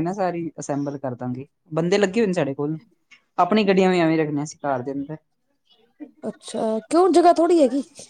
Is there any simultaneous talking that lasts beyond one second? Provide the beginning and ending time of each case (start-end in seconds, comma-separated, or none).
none